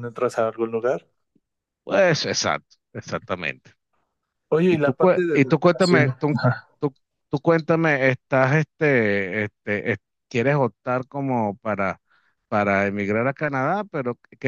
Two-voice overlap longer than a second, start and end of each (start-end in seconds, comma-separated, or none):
4.7-6.1